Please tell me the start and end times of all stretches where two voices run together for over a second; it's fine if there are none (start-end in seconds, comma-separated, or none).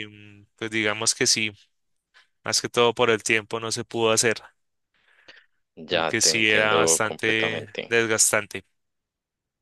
5.9-7.9